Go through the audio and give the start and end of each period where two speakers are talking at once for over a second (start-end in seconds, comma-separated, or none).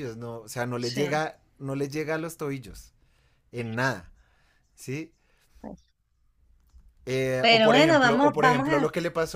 7.4-8.8